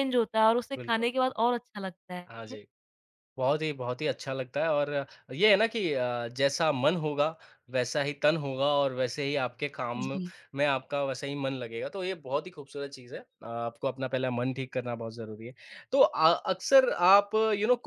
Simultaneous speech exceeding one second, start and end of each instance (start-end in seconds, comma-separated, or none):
none